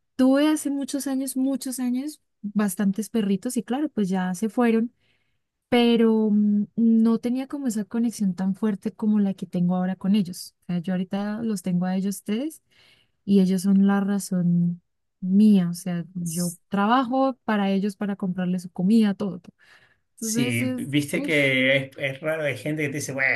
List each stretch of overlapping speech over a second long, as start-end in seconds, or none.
20.2-21.5